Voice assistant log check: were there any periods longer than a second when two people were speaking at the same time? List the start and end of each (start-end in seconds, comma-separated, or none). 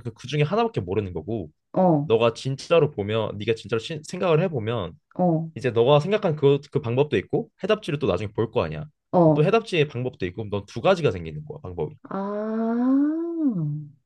none